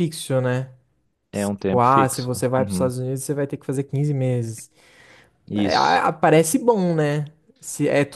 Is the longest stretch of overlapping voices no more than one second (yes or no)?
no